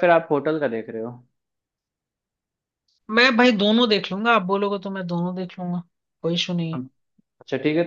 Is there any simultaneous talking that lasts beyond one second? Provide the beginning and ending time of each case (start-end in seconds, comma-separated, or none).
none